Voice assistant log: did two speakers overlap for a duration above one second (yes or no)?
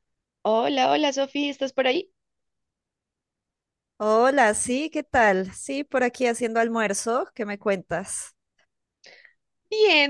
no